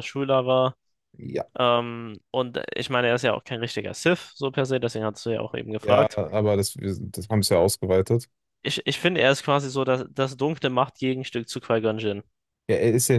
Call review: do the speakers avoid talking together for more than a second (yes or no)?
yes